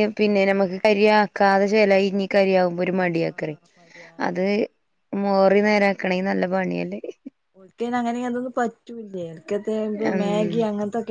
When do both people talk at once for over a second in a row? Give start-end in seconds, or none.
none